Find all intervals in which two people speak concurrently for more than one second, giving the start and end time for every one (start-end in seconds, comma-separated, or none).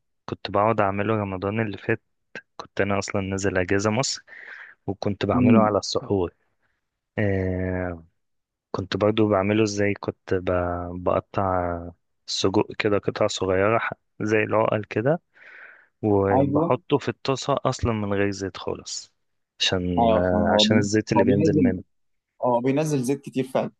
20.0-21.7